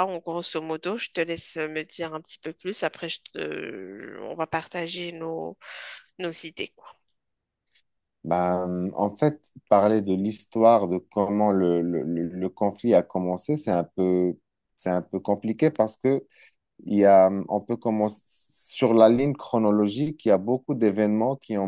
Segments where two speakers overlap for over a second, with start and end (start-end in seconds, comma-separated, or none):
none